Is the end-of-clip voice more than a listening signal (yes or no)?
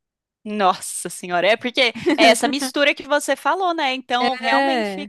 no